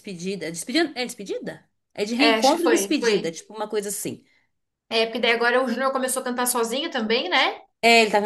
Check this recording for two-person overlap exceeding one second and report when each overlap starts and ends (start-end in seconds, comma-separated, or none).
2.2-3.4